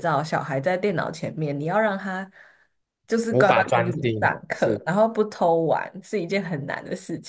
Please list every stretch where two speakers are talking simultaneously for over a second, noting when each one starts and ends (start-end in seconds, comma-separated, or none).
3.3-4.8